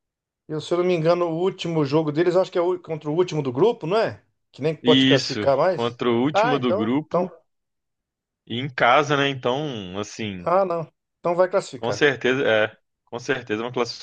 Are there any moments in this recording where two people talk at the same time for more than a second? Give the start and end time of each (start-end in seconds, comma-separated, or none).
4.8-7.3